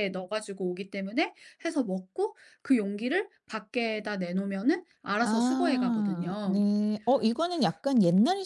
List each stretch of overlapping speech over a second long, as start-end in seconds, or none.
5.2-6.6